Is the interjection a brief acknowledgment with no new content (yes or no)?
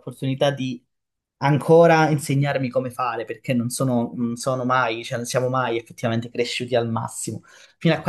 yes